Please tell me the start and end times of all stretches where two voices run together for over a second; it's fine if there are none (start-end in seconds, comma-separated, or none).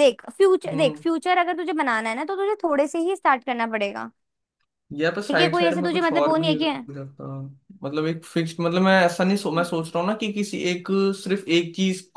5.3-6.9